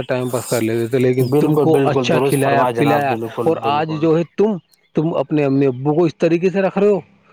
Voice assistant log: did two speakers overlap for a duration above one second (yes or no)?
yes